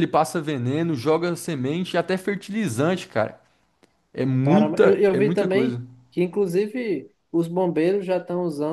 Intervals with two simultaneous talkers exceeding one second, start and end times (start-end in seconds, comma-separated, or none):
4.4-5.8